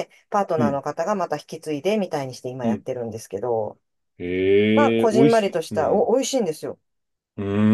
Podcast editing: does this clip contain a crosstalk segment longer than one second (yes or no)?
yes